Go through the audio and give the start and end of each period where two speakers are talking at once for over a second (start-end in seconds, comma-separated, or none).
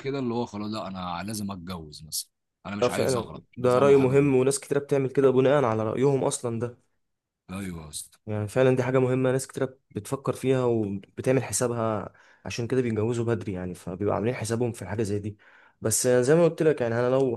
2.8-4.3